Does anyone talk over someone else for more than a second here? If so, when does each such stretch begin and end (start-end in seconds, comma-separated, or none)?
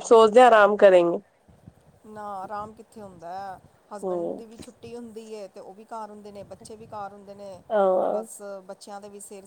none